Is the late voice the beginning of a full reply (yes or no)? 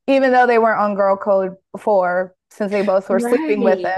yes